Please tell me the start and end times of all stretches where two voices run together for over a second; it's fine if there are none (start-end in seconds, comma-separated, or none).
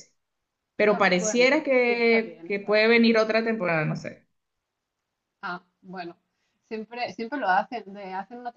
0.9-3.1